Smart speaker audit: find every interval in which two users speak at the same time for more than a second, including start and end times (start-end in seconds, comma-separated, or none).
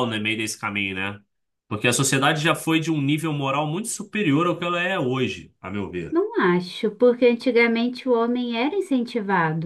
none